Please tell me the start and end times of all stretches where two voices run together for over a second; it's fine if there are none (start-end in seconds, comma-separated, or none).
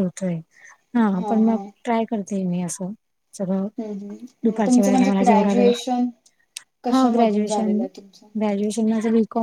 4.5-5.7, 6.9-8.3